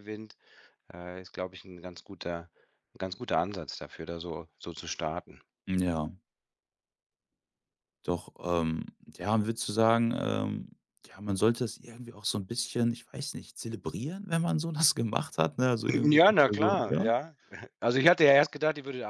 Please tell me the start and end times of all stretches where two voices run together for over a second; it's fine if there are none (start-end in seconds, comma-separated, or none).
15.8-17.1